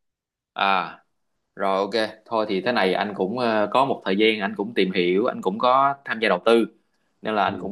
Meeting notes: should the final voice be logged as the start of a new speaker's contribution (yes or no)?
no